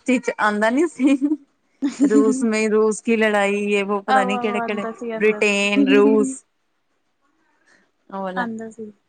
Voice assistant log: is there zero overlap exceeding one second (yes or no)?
no